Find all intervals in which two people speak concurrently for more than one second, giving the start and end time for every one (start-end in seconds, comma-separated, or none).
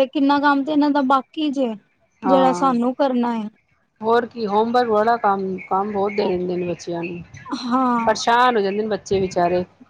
none